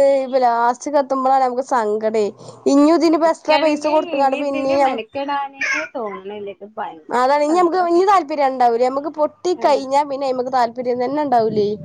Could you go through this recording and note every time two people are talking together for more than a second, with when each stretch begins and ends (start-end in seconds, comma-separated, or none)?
3.2-4.9